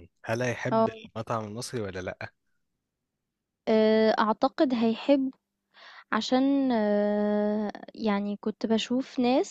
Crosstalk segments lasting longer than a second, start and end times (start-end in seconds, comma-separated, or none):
none